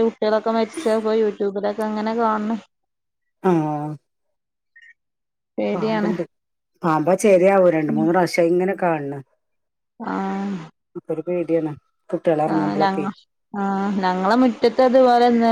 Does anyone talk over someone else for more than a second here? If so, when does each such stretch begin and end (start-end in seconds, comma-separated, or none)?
none